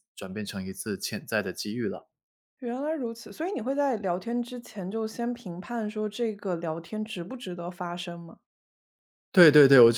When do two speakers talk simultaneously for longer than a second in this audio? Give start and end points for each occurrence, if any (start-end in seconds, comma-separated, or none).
none